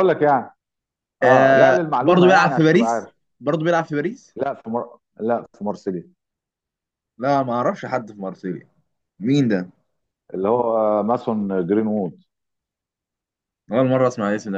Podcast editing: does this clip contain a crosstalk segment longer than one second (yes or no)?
yes